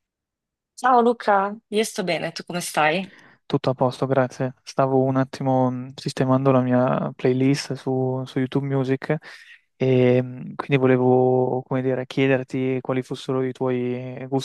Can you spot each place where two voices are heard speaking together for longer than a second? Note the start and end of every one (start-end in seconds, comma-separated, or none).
none